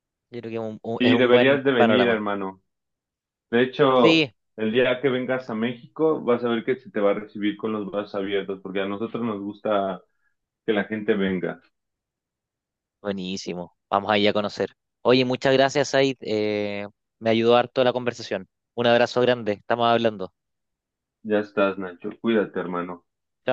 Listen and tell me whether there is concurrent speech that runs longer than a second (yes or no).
yes